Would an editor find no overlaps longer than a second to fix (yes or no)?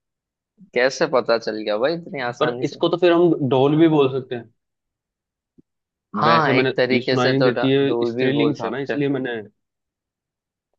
no